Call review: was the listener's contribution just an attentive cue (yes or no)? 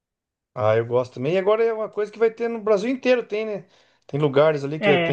yes